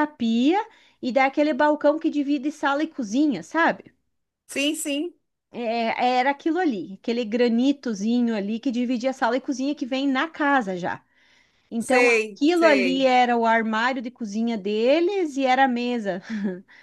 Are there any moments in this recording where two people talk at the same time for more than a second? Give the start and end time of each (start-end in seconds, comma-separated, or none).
11.8-13.1